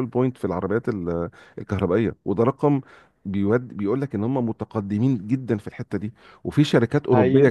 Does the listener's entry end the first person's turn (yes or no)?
no